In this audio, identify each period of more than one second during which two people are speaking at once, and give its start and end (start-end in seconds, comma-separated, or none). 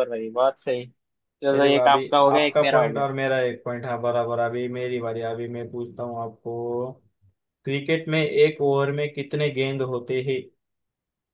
1.5-3.1